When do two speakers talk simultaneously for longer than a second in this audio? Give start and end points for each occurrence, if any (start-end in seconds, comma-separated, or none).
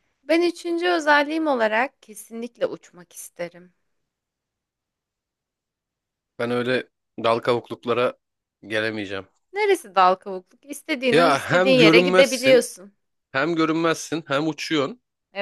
11.1-12.7